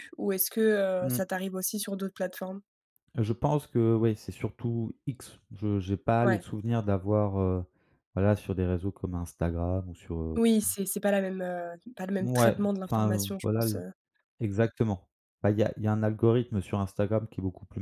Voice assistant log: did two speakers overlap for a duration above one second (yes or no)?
yes